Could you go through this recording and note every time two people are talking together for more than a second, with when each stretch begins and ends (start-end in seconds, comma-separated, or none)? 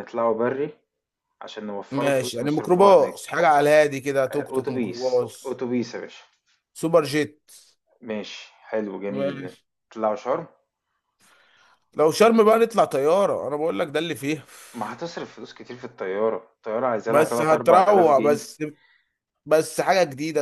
1.9-3.3, 4.3-5.6, 17.1-18.4